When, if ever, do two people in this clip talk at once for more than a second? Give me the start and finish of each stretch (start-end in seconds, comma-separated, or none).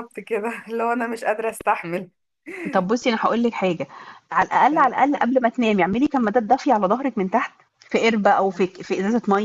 none